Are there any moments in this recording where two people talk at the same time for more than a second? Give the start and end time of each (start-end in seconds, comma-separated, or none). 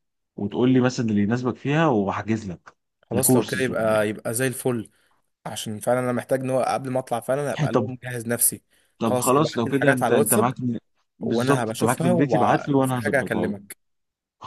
9.0-10.5, 11.2-13.6